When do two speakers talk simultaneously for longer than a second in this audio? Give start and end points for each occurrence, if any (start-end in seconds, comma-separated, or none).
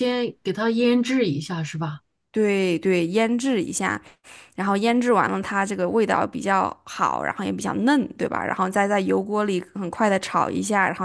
none